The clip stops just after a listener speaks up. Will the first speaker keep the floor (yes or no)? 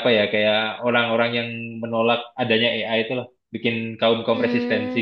no